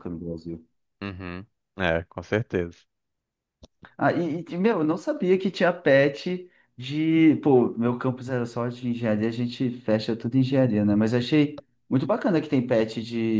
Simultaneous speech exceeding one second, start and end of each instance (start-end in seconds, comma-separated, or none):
none